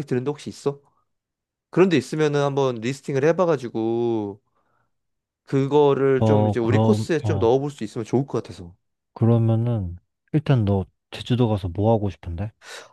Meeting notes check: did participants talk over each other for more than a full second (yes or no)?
yes